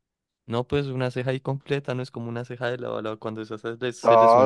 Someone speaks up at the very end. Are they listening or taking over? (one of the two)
taking over